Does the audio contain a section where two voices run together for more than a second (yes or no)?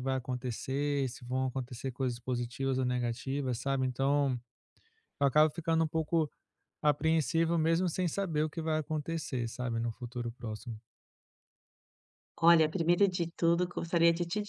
no